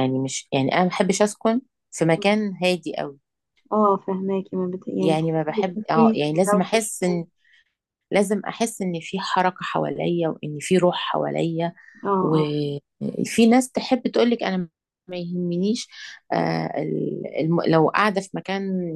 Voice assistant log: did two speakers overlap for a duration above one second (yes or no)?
yes